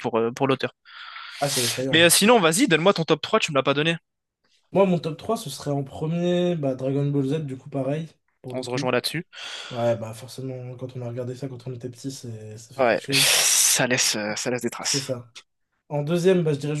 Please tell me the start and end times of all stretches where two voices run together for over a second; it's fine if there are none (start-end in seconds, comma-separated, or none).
none